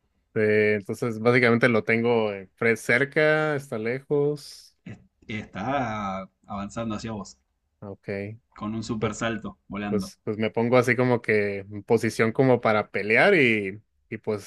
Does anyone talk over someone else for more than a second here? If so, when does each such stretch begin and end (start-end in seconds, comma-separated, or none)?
none